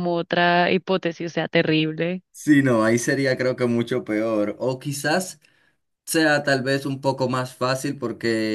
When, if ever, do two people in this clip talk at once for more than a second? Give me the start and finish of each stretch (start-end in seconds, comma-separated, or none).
none